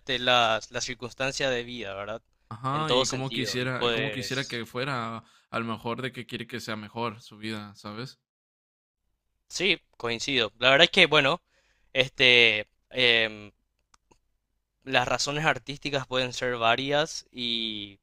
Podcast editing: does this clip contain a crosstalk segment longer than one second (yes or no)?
yes